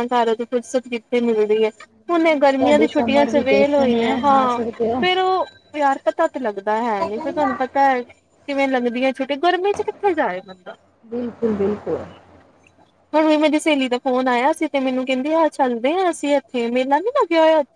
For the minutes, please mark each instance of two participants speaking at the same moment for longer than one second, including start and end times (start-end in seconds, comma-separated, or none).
2.4-4.6